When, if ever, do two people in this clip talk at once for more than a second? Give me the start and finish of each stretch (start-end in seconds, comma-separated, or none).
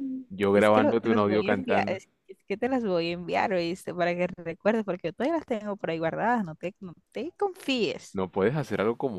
0.5-2.0